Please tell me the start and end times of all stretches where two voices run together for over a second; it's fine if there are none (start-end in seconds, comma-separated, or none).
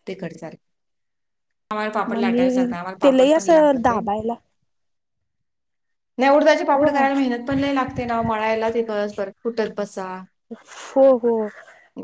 2.1-3.9